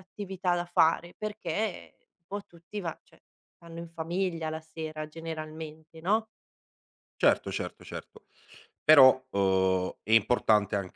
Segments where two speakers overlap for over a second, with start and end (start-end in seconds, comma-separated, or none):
none